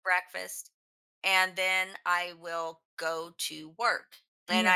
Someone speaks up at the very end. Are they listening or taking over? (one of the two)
listening